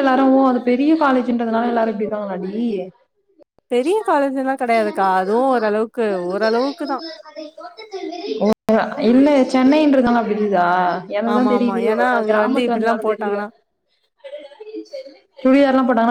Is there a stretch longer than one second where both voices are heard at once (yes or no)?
yes